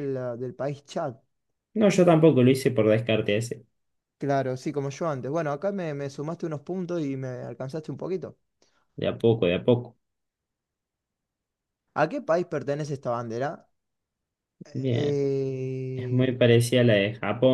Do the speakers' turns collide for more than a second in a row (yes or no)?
no